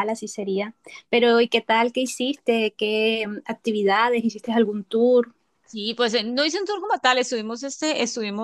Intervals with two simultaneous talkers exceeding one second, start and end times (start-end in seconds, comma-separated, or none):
none